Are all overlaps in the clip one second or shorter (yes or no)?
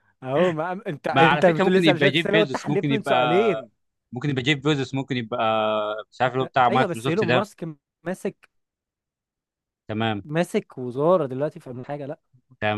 no